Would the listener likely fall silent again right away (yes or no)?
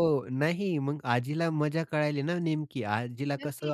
yes